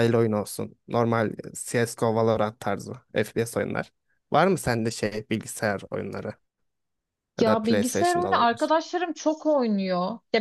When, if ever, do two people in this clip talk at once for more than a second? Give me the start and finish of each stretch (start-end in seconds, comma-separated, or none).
7.4-8.7